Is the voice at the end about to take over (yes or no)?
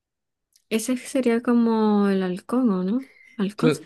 yes